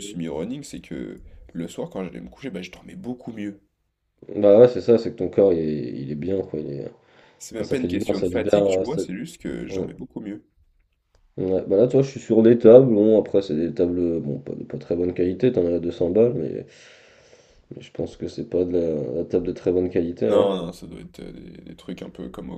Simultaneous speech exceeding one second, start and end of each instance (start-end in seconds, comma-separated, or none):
7.5-9.0